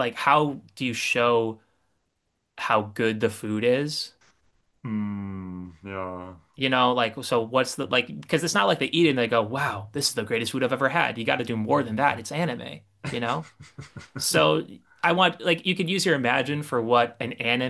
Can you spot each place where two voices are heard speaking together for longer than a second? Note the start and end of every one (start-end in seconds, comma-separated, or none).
none